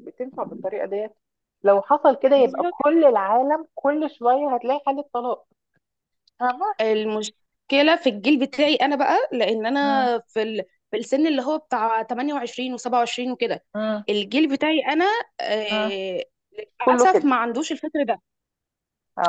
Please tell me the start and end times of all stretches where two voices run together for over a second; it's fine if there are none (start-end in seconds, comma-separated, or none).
none